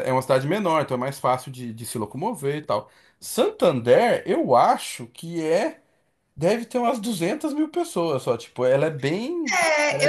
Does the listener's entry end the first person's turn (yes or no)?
yes